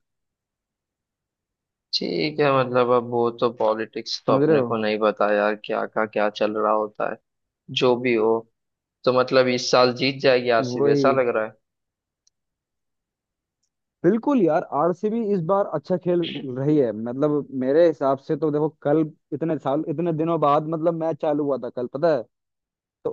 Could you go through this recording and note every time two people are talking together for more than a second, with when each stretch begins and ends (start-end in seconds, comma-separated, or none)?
none